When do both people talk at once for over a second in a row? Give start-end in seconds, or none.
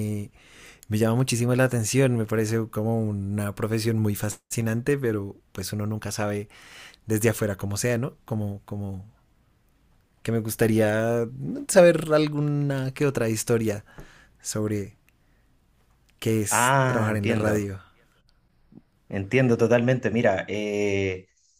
16.5-17.7